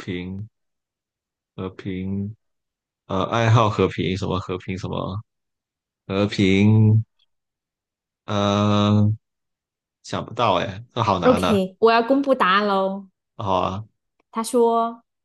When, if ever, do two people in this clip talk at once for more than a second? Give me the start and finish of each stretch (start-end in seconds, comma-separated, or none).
none